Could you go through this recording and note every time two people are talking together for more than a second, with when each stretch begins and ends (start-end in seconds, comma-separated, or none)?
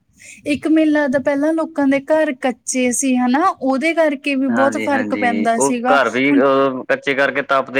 4.5-6.4